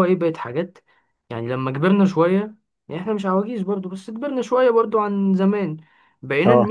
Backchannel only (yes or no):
yes